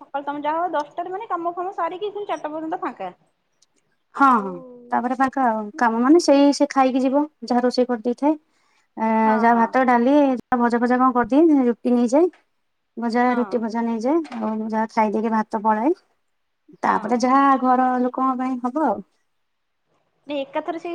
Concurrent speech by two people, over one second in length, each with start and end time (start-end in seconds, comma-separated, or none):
none